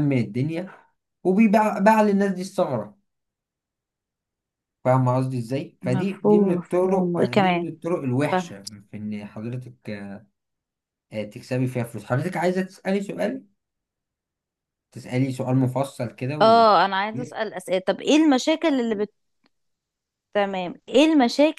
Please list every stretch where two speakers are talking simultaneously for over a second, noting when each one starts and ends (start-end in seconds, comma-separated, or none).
5.8-7.7